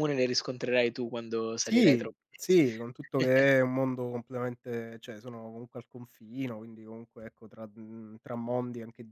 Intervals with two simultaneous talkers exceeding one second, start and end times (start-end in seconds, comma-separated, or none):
1.6-3.5